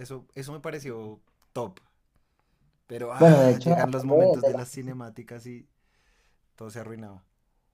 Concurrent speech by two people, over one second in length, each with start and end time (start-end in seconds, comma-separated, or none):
3.2-5.0